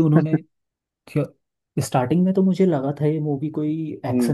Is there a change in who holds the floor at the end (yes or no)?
no